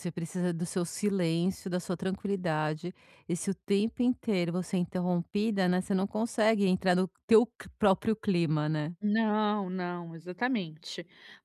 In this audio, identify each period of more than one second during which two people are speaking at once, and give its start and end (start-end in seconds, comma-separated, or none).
none